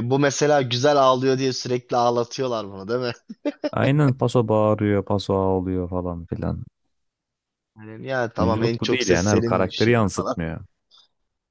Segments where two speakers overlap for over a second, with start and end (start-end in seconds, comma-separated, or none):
8.4-10.4